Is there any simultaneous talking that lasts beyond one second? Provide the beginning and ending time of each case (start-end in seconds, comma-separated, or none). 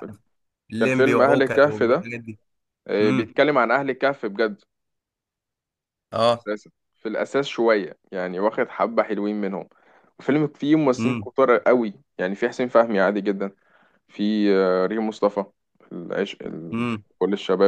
0.8-2.1